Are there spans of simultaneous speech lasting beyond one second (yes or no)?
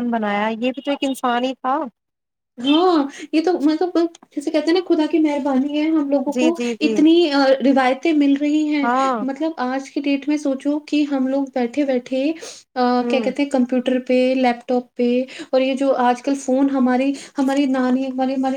no